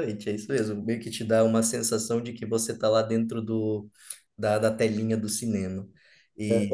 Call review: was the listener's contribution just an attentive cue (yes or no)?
no